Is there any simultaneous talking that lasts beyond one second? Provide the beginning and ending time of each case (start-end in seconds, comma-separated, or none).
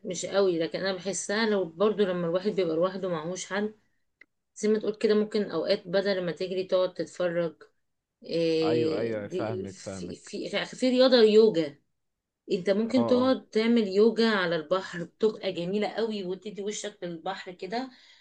8.6-10.3